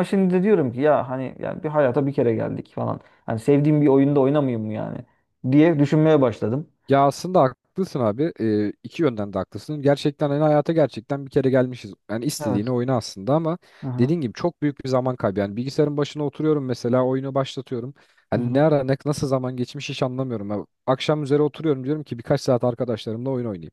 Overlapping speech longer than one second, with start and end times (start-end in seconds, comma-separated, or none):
none